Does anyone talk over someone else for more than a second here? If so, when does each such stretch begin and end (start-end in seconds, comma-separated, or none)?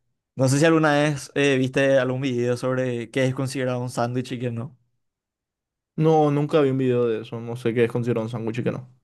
none